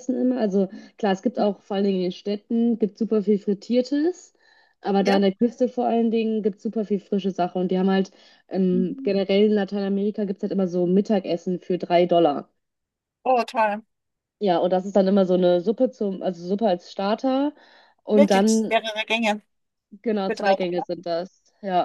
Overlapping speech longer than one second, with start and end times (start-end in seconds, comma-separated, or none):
none